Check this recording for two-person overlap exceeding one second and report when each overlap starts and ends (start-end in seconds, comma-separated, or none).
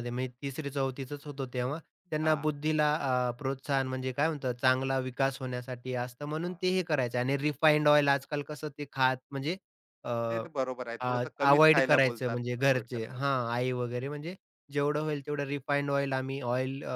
11.9-13.6